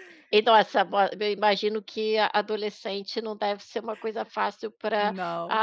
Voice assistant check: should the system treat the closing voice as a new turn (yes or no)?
no